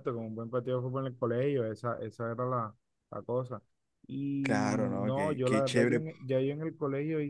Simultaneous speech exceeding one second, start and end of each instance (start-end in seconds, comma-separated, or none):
4.4-6.0